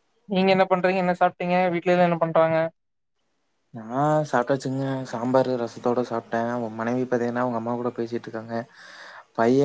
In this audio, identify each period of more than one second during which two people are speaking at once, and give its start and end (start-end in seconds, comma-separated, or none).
none